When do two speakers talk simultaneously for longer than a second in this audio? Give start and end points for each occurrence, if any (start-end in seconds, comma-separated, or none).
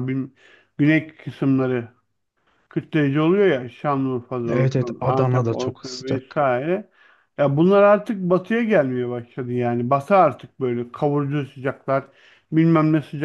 4.5-6.4